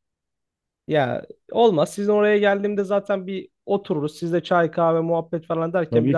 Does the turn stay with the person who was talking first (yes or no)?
yes